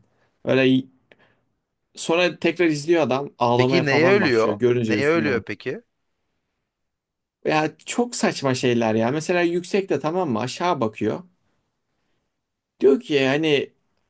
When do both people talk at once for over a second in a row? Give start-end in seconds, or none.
3.5-5.5